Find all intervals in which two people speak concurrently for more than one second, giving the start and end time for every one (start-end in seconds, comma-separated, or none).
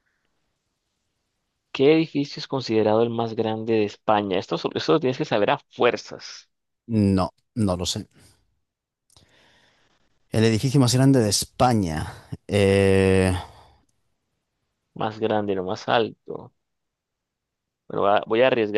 none